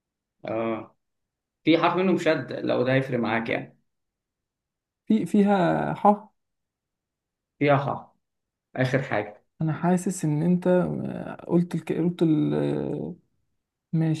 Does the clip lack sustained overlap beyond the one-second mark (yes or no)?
yes